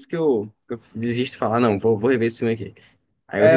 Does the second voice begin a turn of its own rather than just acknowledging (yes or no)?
yes